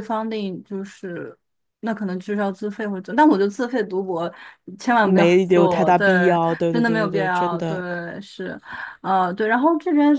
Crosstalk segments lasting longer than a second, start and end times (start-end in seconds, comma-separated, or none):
5.0-7.8